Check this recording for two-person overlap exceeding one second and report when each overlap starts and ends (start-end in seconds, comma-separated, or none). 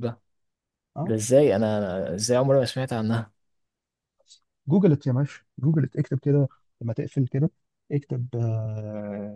none